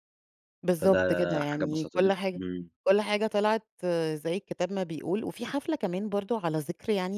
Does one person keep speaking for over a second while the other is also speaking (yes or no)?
yes